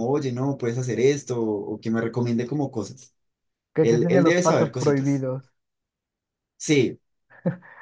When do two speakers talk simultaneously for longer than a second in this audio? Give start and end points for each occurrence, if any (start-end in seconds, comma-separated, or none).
3.8-5.2